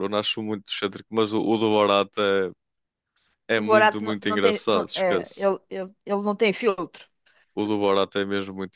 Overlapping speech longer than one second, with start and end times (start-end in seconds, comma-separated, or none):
3.5-5.5